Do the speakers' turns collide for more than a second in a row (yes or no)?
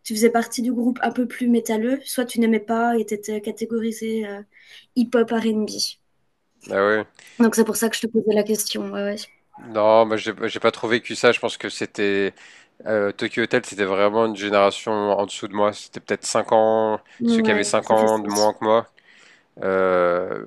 yes